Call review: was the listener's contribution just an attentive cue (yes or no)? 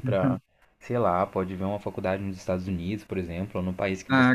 no